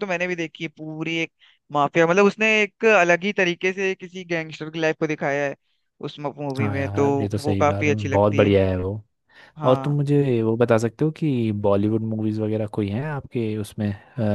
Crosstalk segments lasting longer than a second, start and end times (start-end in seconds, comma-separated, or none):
6.6-8.5